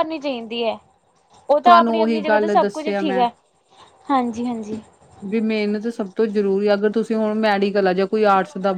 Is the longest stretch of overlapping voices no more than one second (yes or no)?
no